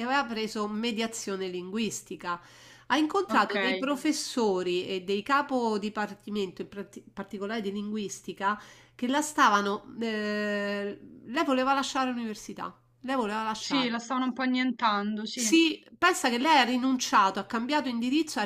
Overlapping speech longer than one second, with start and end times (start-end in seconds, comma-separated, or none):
none